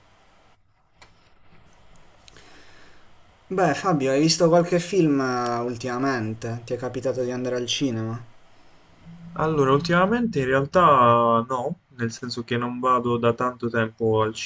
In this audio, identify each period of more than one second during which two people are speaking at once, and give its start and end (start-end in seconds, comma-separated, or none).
none